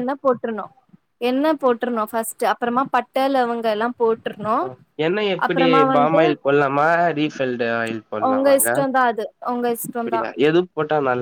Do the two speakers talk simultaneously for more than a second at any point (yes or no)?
no